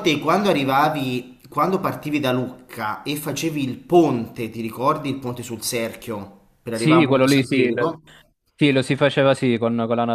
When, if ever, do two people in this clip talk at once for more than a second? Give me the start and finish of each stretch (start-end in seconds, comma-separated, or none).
6.7-8.0